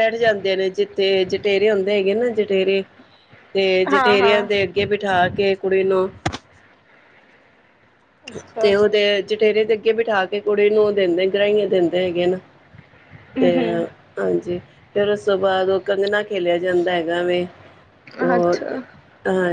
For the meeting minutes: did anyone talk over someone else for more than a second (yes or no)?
no